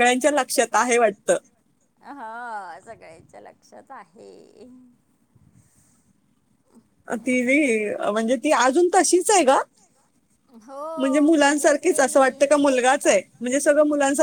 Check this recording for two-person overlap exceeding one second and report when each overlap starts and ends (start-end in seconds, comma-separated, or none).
11.0-12.4